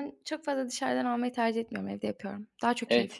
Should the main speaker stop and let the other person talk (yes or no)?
yes